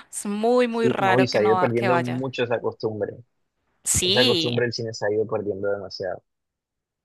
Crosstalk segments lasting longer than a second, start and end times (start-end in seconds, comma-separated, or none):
0.7-2.2